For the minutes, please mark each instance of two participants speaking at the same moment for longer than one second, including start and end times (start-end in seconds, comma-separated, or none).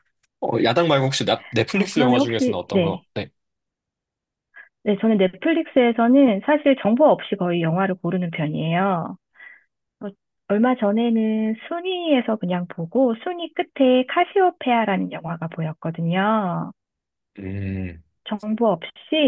1.7-3.0